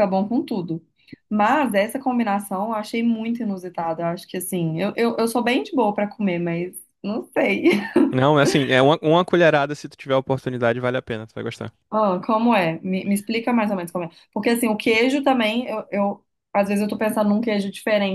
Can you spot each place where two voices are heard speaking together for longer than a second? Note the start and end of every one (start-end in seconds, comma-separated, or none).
none